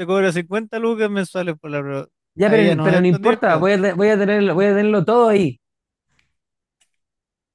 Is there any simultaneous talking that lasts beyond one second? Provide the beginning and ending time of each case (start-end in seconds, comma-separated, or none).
2.4-3.7